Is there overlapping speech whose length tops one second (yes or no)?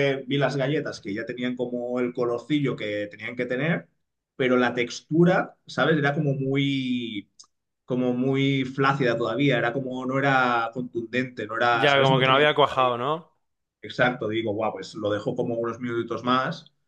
yes